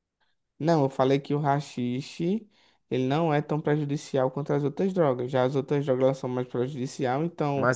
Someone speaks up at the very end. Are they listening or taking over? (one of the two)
taking over